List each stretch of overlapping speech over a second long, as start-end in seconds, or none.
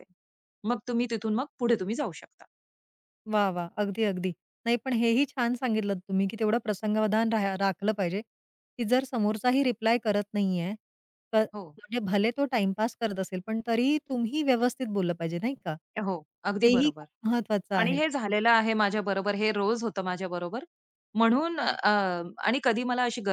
none